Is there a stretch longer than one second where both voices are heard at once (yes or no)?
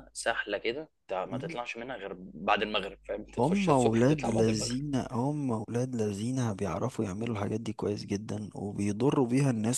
yes